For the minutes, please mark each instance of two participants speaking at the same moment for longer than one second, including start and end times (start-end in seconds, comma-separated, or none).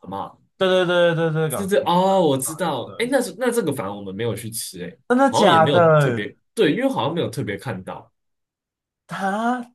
1.5-3.1, 5.1-6.3